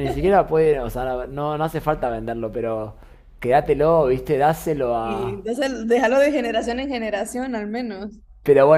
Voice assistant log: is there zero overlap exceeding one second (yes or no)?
yes